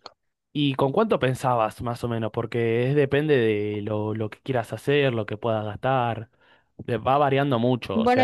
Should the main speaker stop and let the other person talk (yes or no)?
yes